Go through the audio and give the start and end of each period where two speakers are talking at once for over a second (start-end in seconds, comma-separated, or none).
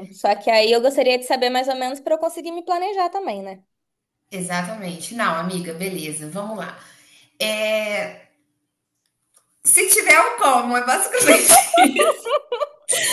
none